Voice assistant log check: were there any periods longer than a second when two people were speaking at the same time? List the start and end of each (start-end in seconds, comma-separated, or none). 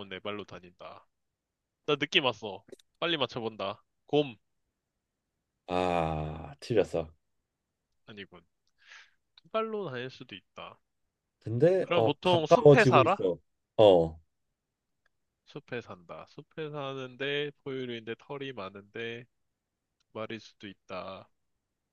11.8-13.2